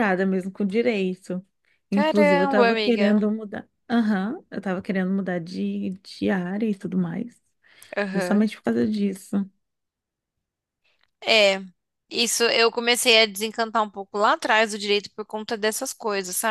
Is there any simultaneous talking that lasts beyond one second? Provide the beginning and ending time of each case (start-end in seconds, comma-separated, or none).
1.9-3.2